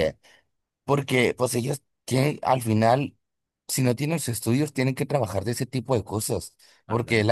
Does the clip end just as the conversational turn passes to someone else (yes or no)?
no